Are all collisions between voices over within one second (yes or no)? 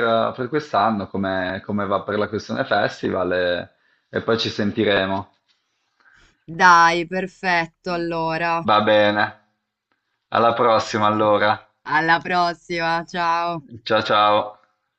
yes